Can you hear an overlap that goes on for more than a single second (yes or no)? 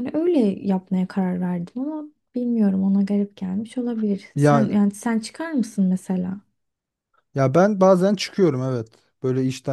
no